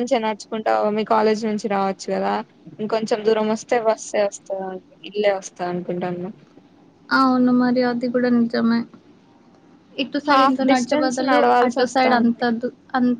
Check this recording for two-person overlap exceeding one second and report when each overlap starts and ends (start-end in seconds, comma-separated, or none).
10.3-12.4